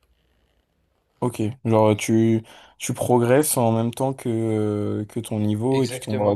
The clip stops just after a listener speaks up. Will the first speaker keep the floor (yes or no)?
no